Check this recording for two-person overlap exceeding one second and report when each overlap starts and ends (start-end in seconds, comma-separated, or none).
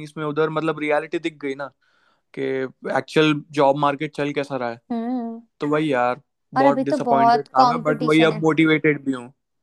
6.6-8.4